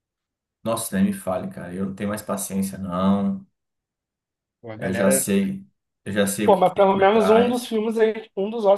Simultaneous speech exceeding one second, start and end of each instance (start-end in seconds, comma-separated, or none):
6.4-7.7